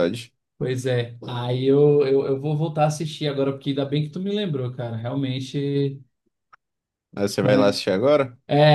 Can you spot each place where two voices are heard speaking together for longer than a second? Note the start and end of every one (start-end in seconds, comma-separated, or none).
none